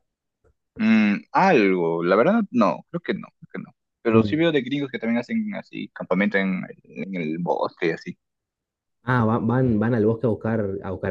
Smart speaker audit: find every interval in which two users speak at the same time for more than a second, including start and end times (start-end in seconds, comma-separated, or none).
none